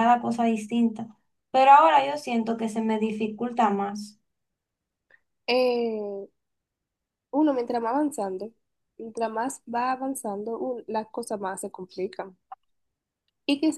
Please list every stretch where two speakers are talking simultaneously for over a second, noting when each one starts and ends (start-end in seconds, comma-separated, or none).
none